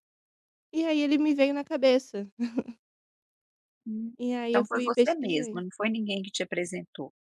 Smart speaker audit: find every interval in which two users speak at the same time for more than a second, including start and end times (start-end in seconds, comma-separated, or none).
4.2-5.7